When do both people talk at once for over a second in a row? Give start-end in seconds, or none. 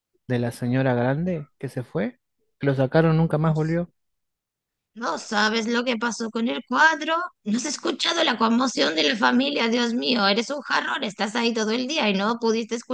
none